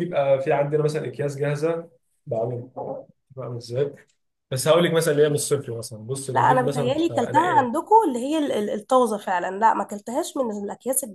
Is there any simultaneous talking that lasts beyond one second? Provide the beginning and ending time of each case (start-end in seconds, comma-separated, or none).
6.3-7.8